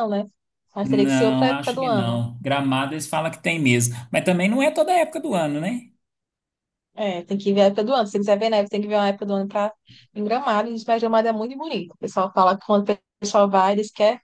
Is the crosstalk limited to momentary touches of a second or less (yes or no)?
no